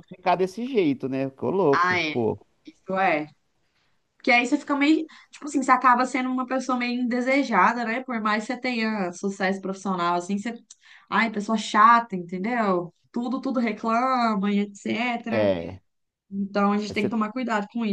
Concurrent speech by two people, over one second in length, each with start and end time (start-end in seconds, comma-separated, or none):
none